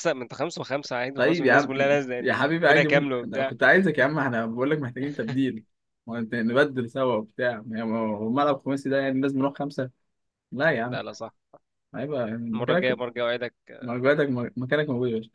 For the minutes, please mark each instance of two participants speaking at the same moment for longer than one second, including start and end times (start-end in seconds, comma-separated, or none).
1.1-3.5